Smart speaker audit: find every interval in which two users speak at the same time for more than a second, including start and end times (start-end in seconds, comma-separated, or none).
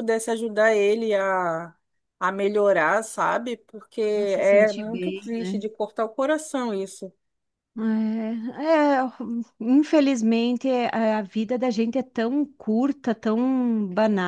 4.1-5.7